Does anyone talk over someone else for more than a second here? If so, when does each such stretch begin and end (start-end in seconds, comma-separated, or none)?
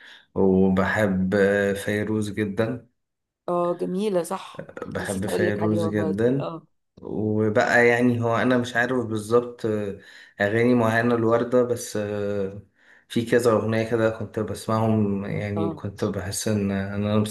4.9-6.5